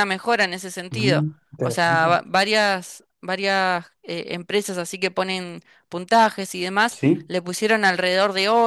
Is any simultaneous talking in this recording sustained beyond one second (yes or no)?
yes